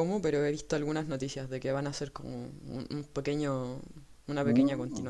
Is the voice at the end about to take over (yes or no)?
yes